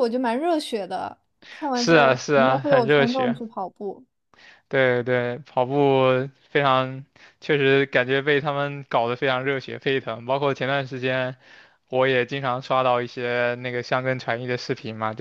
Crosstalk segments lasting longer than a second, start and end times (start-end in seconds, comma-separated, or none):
1.7-3.4